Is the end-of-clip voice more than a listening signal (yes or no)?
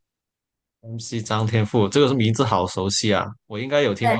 yes